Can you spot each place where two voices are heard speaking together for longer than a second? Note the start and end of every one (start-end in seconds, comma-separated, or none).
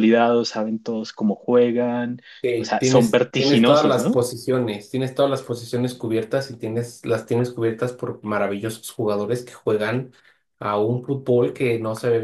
2.6-4.2